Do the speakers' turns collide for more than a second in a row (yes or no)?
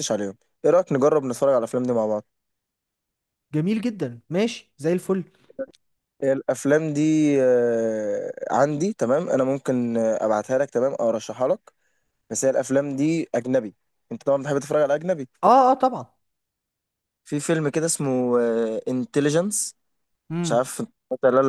no